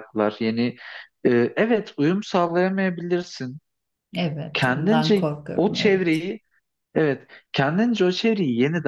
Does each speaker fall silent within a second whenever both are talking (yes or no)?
no